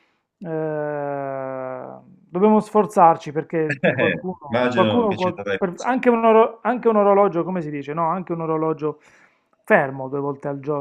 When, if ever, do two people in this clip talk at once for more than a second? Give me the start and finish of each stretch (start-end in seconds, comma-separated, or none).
3.9-6.0